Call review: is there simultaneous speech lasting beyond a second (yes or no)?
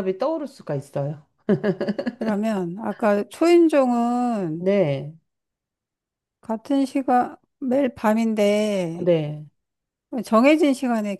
no